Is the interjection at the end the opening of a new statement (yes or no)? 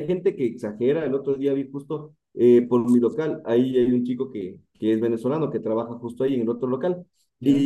no